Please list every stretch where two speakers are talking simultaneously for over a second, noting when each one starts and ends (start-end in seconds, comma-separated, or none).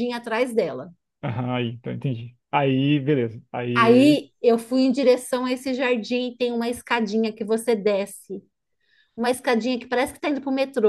none